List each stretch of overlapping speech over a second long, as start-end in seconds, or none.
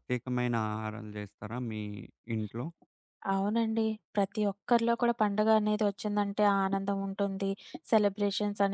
none